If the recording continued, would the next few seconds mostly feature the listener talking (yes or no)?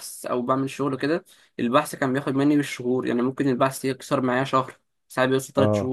no